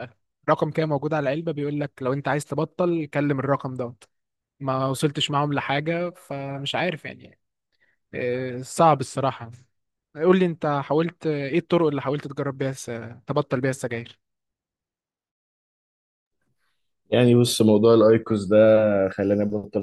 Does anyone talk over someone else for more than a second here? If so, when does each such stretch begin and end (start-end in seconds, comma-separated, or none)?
none